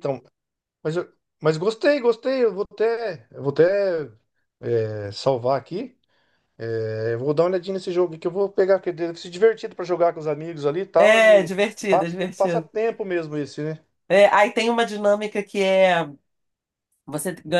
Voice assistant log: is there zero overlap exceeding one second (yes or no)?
no